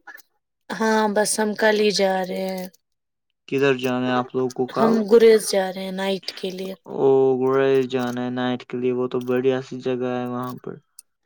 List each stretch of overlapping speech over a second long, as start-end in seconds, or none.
none